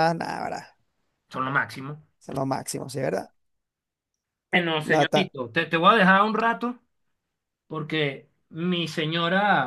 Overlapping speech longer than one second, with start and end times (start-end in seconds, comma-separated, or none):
none